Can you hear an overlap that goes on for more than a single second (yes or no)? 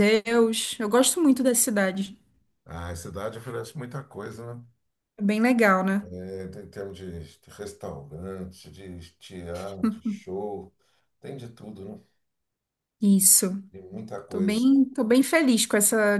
no